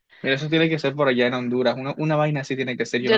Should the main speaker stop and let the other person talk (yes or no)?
yes